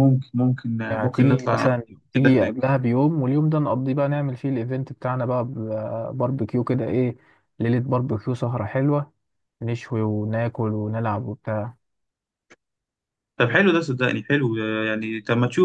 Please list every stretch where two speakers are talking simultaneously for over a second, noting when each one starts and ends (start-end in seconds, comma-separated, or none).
0.9-2.6